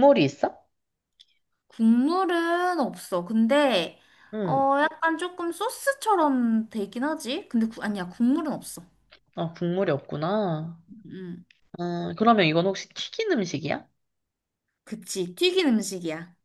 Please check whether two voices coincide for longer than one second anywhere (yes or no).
no